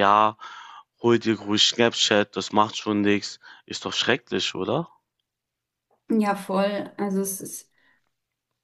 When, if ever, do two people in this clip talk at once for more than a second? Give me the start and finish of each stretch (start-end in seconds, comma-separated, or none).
none